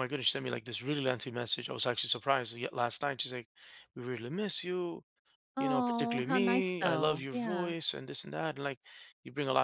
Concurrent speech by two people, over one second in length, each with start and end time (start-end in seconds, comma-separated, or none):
5.6-7.7